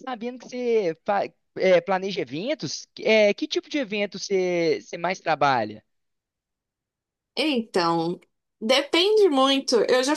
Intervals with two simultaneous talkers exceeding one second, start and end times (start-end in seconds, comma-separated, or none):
none